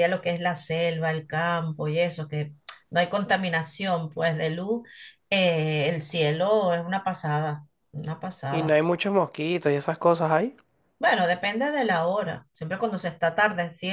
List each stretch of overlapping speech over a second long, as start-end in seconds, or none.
none